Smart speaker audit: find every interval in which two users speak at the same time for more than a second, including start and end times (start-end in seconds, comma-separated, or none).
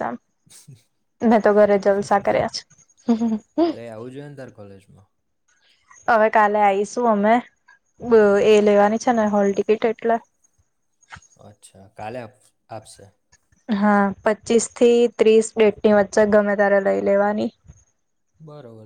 none